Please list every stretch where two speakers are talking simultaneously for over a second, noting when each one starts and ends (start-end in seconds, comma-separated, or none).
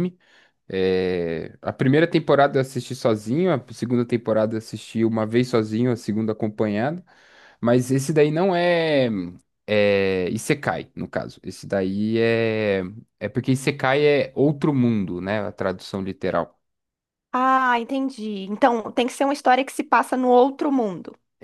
none